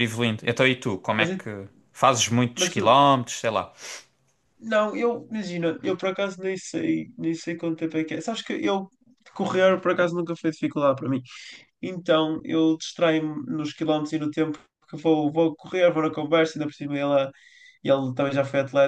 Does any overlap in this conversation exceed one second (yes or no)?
no